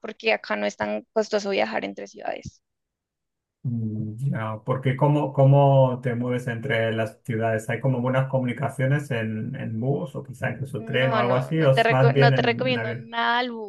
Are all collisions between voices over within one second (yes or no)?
no